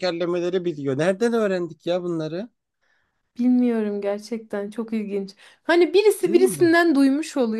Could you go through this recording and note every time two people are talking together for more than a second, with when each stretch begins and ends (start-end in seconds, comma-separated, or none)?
none